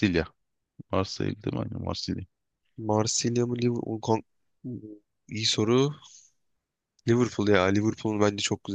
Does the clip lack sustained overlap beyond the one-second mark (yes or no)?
yes